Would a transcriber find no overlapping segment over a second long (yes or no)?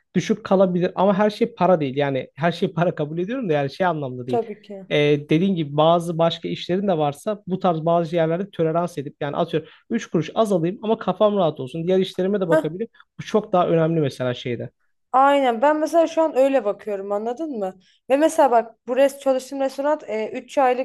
yes